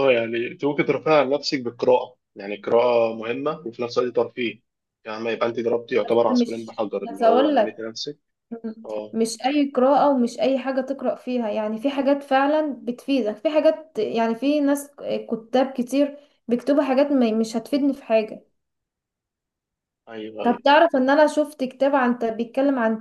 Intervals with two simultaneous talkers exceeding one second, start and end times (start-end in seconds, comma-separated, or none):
6.0-7.8